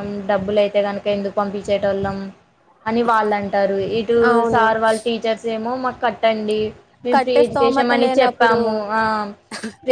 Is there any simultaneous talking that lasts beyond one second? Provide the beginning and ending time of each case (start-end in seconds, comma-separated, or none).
7.1-8.6